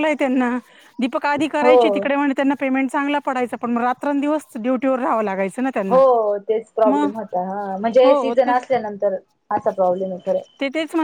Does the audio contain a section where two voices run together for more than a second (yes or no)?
no